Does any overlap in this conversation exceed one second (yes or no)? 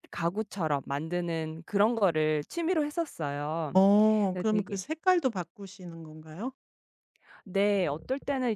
no